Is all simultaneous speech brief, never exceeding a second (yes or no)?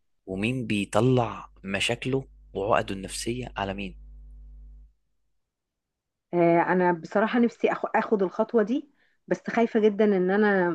yes